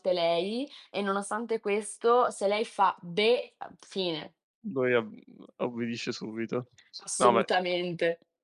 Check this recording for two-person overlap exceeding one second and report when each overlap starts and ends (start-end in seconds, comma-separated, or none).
none